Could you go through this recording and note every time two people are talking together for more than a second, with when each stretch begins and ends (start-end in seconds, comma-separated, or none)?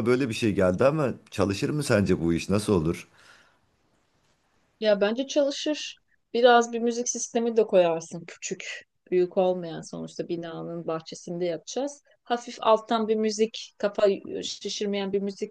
none